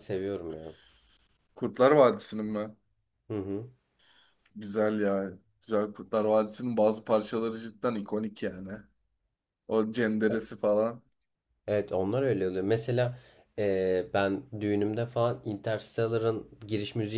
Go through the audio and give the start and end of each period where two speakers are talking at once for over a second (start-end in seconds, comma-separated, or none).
none